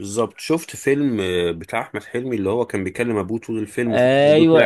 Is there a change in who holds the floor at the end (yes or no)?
yes